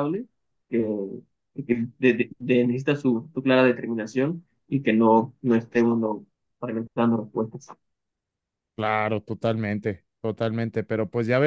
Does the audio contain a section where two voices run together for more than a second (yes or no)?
no